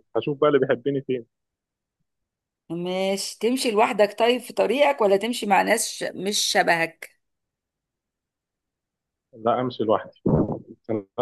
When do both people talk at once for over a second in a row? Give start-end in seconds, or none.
none